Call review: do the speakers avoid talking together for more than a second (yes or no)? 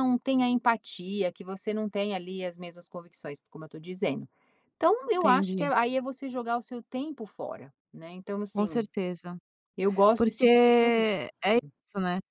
no